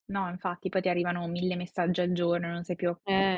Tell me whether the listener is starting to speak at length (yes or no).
no